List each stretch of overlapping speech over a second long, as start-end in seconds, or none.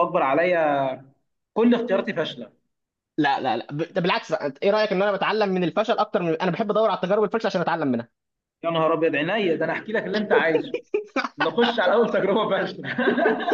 none